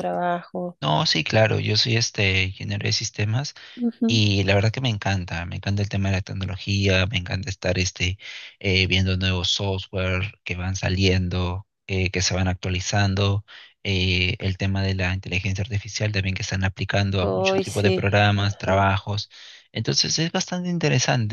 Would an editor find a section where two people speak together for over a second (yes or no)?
yes